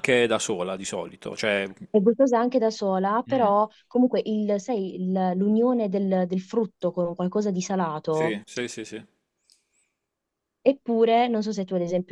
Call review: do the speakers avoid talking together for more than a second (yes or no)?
yes